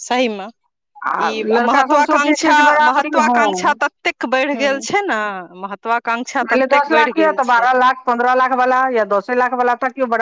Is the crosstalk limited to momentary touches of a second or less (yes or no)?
no